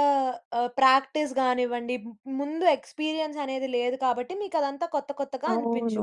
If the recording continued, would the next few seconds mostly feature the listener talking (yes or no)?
yes